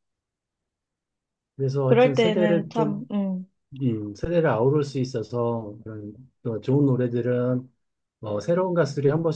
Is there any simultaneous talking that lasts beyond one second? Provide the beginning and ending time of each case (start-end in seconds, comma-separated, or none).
1.9-3.1